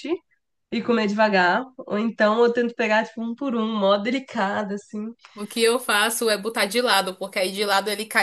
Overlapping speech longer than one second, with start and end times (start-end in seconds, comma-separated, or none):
none